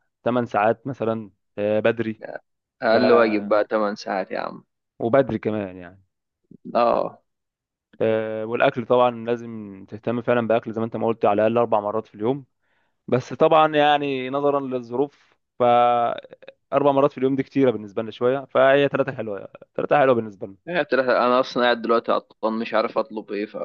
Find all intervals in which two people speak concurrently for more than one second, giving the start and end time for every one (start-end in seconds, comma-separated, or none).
none